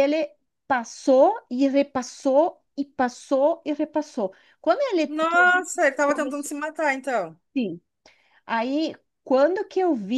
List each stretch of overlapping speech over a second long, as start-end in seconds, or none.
5.1-6.5